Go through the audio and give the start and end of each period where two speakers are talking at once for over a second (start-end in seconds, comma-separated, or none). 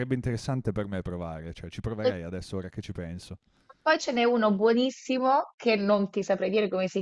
none